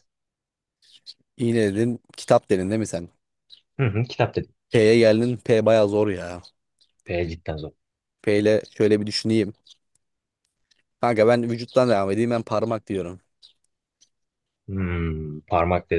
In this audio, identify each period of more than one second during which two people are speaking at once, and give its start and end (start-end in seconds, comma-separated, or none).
none